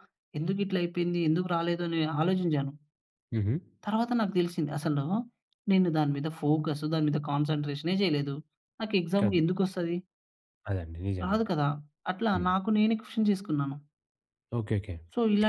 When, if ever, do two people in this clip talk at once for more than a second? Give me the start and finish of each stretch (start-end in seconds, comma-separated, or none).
none